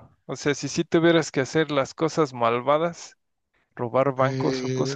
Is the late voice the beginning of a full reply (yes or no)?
yes